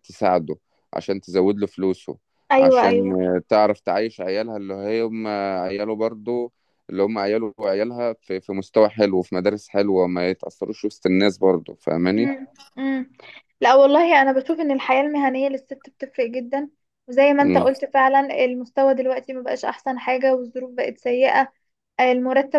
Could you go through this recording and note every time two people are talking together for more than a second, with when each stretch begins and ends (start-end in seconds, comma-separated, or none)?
none